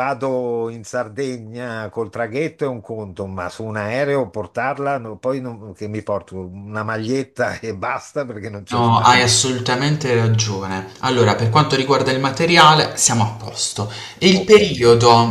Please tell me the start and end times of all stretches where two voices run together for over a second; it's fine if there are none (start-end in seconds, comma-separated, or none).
none